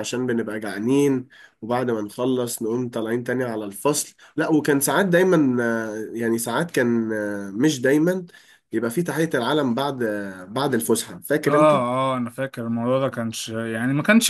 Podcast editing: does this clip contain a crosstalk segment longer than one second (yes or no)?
no